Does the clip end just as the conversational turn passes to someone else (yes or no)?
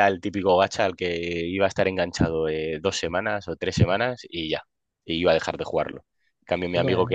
no